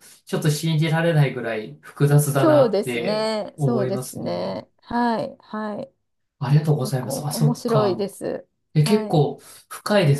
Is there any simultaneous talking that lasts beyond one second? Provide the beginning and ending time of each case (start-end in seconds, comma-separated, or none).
2.3-4.6, 6.8-8.1